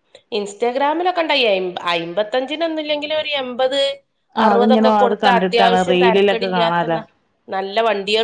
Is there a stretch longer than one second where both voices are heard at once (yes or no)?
yes